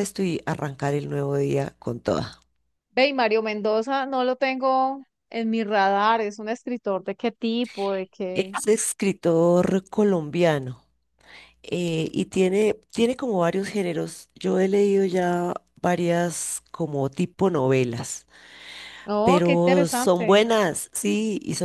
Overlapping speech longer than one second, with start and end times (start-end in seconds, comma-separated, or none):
19.2-20.4